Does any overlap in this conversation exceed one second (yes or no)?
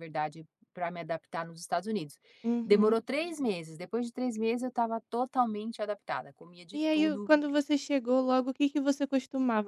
no